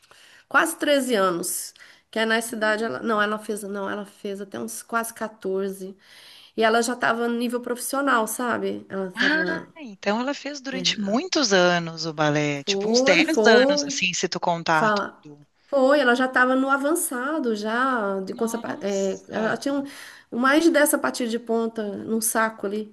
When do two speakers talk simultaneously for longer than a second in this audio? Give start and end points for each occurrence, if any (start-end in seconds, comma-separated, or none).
12.6-14.0, 18.2-19.6